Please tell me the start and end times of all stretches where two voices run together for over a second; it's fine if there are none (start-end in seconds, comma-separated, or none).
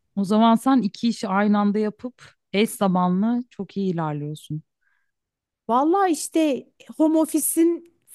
none